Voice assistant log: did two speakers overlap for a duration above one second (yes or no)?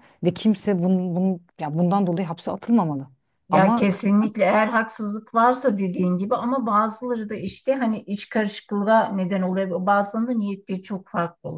no